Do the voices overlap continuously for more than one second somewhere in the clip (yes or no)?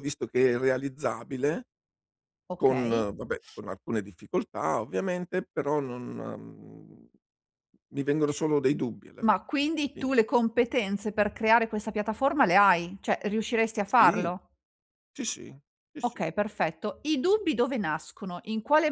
no